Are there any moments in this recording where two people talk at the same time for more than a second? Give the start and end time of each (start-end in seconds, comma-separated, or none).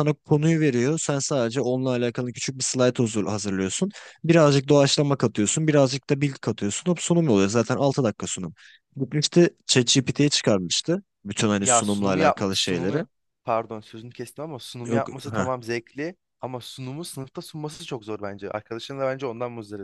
11.6-13.0